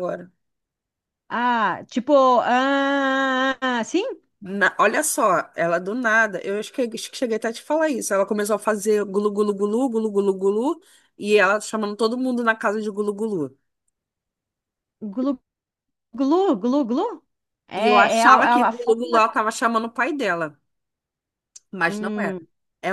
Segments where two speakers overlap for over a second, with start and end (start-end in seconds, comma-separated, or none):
17.8-19.2